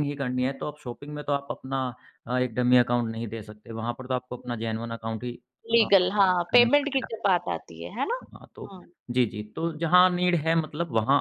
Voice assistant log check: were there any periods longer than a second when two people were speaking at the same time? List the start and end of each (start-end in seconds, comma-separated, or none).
5.7-7.1